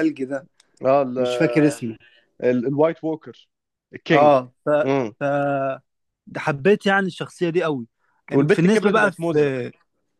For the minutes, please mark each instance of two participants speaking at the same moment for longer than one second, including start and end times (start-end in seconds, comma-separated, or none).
8.3-9.5